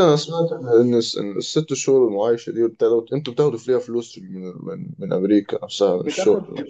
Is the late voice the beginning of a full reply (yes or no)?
yes